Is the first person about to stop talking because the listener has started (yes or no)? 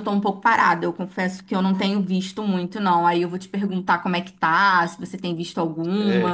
yes